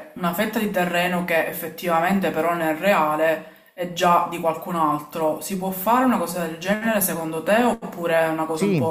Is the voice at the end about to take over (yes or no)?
yes